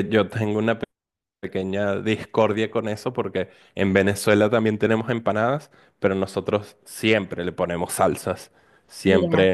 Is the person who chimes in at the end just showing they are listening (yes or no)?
yes